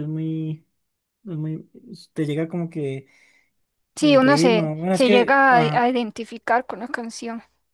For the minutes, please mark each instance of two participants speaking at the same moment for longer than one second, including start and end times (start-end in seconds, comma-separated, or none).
4.0-5.9